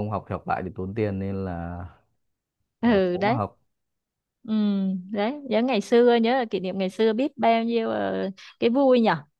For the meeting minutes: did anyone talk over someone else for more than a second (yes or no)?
no